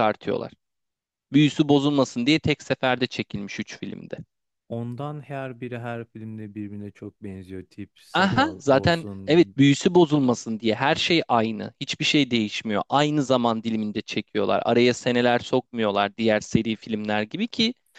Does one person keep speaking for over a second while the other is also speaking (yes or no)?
yes